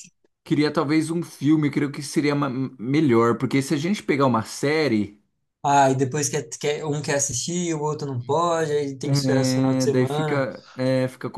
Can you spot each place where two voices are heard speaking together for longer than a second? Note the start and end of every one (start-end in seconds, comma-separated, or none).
9.0-10.5